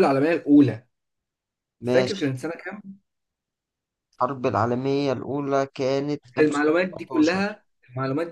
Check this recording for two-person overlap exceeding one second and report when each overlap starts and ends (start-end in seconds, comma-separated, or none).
6.4-7.6